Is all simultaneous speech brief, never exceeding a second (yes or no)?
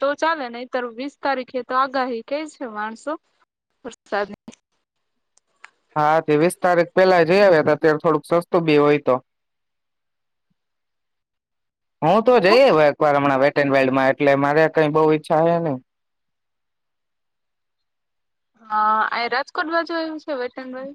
yes